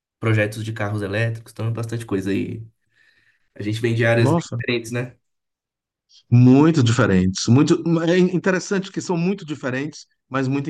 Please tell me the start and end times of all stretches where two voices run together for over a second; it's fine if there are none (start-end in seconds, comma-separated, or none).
none